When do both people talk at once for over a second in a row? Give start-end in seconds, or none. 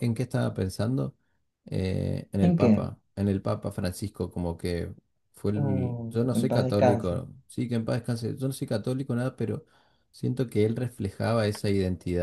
5.6-7.1